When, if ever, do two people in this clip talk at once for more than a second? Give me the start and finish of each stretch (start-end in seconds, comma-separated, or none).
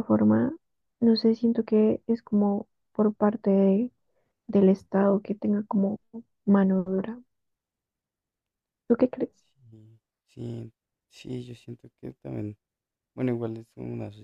none